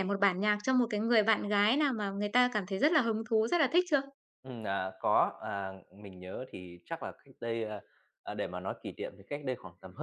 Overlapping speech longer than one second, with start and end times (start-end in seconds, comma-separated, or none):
none